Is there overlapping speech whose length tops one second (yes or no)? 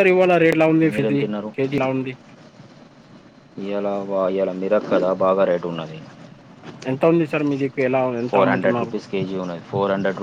no